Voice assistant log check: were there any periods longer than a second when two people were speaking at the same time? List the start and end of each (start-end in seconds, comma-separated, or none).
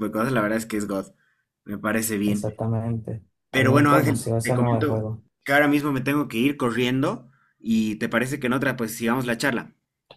3.5-5.2